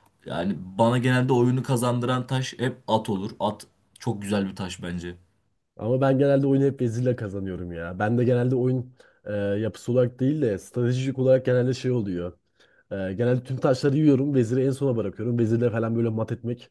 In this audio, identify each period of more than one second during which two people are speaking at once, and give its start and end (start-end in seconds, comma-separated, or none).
none